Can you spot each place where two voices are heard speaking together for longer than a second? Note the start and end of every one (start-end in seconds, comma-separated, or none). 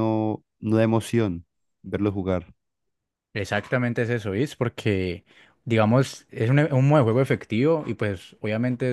none